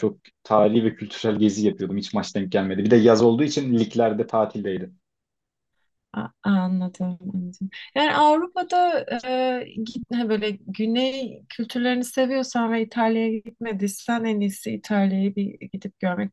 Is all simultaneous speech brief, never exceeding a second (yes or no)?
yes